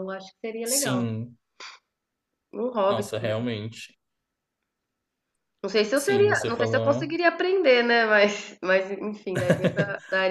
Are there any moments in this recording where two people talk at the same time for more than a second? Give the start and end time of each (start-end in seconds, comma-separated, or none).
5.9-7.2